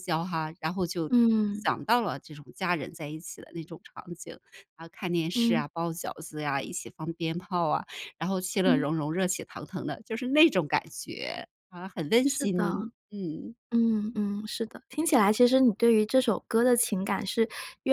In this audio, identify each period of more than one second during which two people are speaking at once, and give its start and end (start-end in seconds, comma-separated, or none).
none